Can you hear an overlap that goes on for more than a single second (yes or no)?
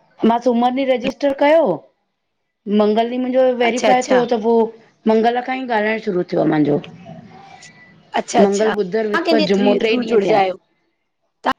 yes